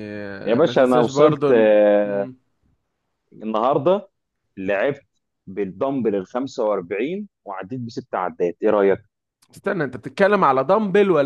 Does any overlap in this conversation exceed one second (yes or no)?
yes